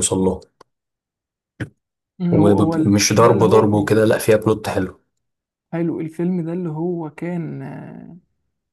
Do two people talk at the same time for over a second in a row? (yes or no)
yes